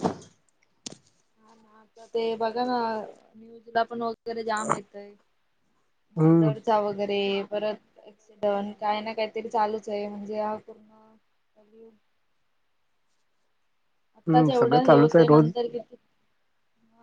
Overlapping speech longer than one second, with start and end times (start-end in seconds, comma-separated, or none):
14.2-15.5